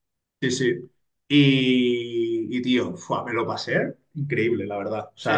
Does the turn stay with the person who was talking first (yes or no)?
yes